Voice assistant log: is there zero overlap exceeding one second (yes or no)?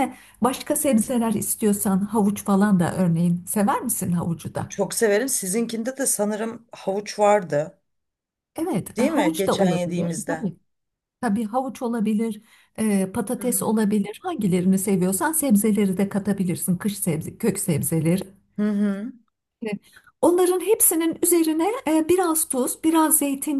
no